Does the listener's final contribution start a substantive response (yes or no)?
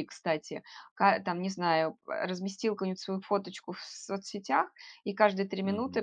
no